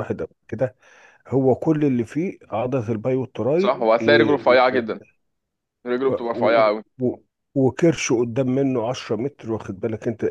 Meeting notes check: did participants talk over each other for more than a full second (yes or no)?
no